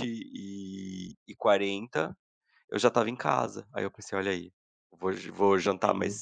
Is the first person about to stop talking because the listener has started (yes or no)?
no